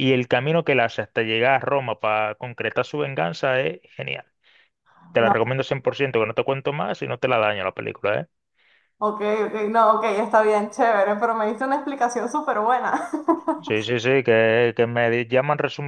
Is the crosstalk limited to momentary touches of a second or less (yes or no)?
yes